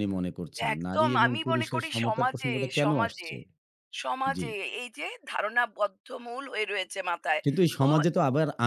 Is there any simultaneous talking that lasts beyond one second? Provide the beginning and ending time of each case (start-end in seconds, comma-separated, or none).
0.7-3.3